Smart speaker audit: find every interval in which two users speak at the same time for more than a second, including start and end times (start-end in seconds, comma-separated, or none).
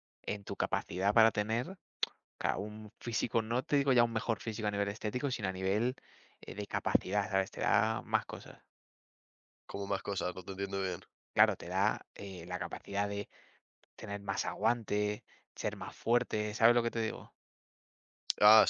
none